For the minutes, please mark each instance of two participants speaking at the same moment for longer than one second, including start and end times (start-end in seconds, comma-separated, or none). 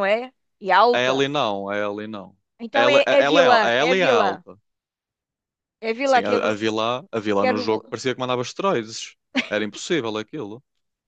2.7-4.4